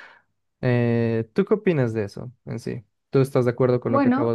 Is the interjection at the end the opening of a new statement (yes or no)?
yes